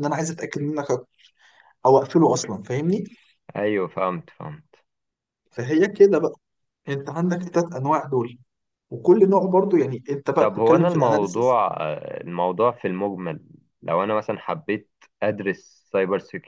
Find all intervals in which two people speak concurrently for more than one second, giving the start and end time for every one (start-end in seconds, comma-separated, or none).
10.4-11.6